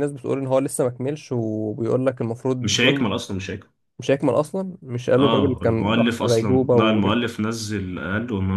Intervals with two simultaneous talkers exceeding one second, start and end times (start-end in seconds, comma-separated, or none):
5.2-7.2